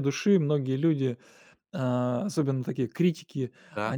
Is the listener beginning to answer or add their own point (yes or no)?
no